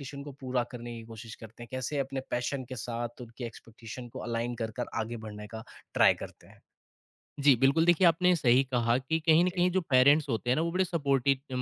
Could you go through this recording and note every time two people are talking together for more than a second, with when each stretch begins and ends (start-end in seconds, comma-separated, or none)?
none